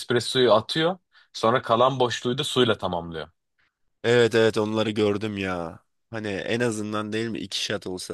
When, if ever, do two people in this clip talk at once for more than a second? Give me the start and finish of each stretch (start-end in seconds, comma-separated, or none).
none